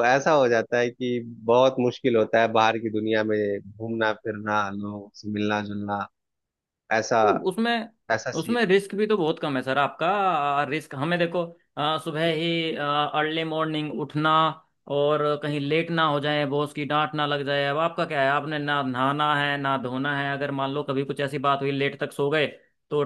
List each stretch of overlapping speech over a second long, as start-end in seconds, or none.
none